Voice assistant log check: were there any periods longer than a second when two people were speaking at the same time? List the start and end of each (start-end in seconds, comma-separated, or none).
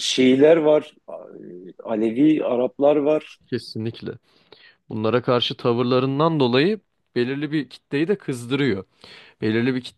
none